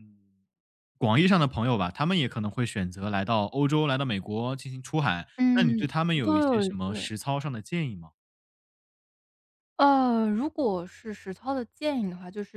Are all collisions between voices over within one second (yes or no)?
no